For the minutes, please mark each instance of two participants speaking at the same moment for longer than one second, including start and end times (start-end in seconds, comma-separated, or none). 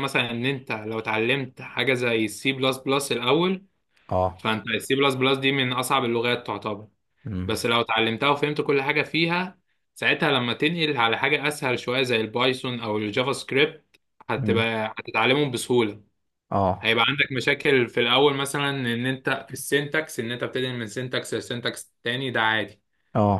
none